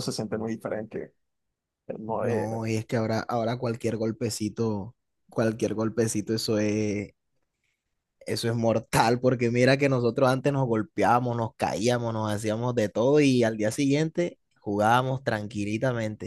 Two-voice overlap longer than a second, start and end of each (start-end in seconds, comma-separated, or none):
none